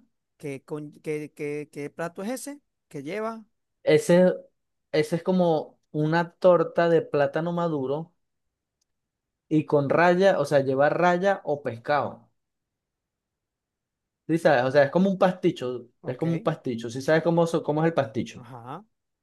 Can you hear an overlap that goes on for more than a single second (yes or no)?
no